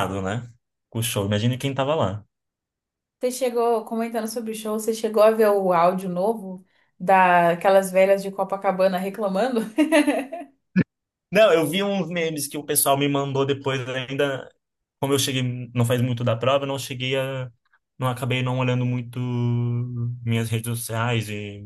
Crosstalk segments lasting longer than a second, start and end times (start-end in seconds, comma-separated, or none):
none